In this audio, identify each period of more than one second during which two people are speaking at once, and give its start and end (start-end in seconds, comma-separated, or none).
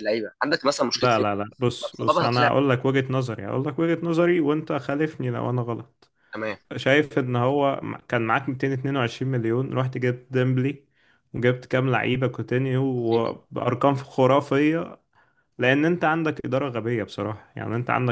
0.9-2.5